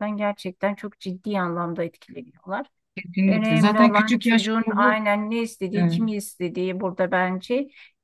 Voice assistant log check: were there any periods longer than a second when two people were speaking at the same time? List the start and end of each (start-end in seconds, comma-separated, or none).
3.3-5.0